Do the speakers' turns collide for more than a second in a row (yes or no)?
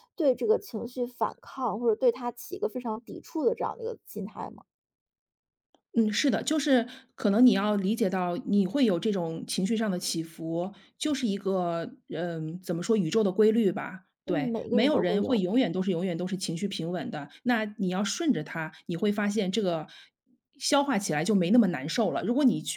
yes